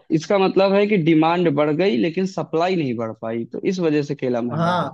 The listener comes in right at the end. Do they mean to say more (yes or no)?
yes